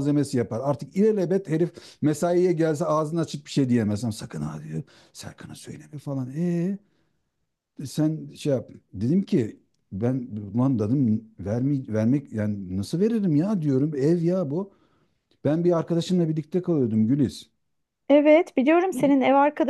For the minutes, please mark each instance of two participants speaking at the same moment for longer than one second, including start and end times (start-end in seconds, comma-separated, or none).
none